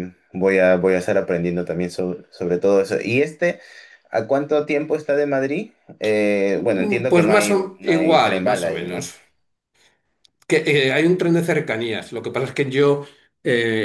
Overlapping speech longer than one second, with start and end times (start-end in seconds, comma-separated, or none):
6.5-9.1